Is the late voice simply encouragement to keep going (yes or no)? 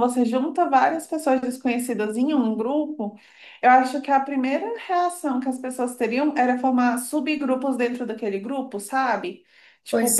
yes